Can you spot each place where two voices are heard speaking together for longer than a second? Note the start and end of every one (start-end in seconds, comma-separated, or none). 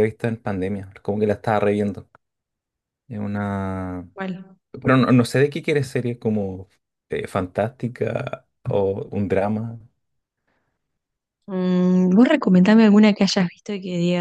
none